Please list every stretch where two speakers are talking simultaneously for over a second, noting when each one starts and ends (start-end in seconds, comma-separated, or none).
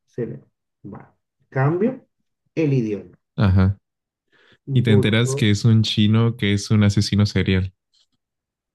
none